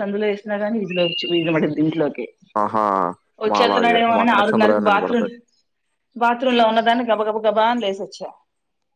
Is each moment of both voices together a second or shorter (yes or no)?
no